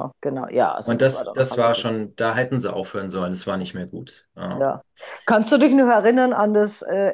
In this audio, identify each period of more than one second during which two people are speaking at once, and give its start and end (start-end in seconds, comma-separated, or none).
0.8-2.1